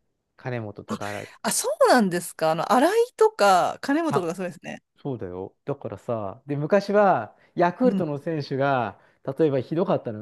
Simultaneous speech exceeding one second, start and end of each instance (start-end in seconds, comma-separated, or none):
none